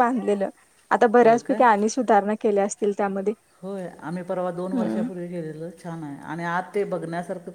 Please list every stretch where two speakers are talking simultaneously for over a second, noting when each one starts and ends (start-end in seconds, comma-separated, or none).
none